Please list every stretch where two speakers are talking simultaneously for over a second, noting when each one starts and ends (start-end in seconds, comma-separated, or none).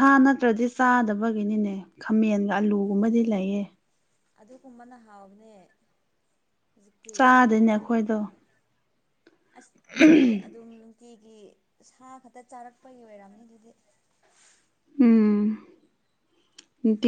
none